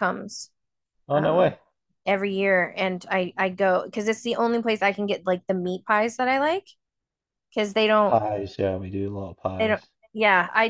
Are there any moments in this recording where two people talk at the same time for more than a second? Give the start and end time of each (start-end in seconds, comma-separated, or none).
none